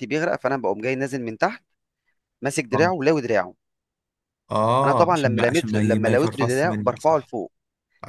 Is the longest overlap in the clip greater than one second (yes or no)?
yes